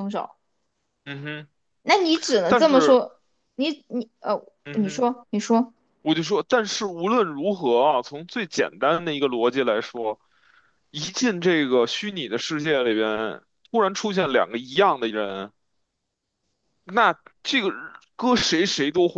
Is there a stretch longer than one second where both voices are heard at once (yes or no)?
no